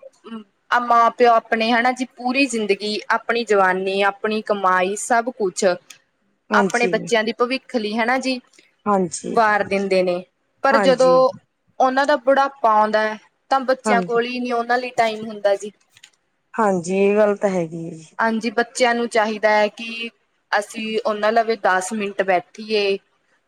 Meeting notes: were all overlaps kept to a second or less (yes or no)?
yes